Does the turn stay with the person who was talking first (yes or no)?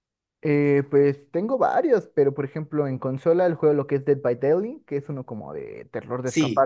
yes